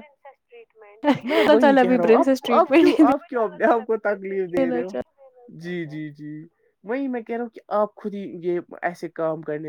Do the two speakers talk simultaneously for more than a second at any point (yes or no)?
yes